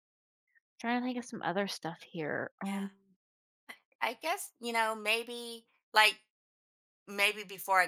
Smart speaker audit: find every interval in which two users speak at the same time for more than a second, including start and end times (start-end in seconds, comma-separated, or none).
none